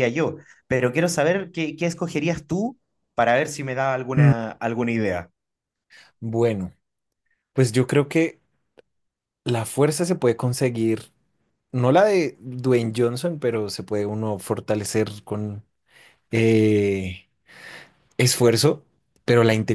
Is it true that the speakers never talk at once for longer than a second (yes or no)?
yes